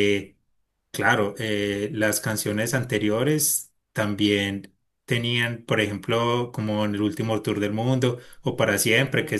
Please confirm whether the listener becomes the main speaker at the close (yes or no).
no